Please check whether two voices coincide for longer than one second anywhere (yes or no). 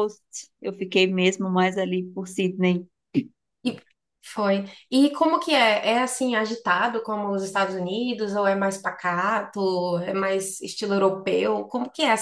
no